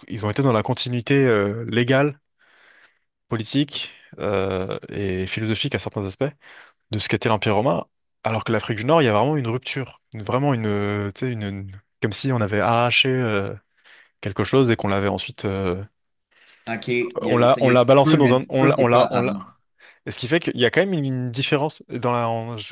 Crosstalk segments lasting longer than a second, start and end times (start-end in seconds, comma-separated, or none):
17.2-19.3